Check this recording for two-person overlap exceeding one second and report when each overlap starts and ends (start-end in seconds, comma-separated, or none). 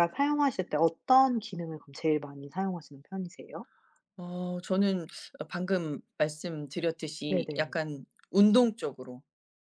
none